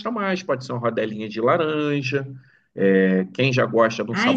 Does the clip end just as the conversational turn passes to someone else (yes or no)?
yes